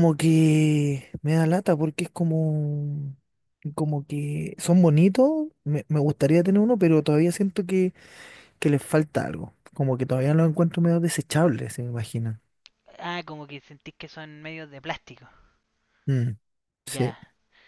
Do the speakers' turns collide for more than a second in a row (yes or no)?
no